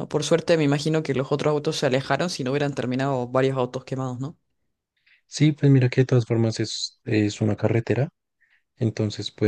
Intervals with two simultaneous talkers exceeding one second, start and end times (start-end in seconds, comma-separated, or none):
none